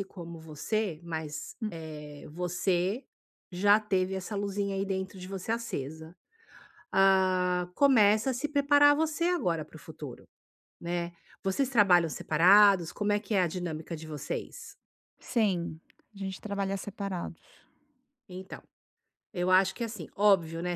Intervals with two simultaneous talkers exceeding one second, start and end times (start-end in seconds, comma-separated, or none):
none